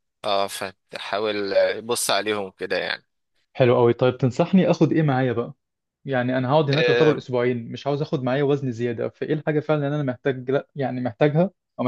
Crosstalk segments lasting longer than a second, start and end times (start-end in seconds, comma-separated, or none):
none